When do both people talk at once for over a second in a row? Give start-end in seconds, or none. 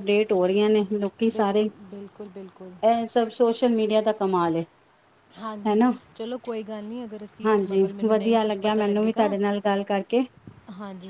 7.4-9.3